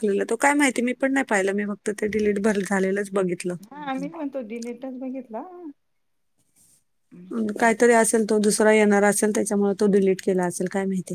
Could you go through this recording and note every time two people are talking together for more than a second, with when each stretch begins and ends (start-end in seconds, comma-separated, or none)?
none